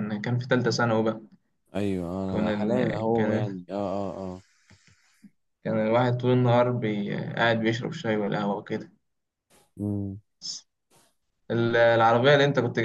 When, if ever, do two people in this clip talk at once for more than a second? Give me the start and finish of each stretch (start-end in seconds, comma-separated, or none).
2.3-3.6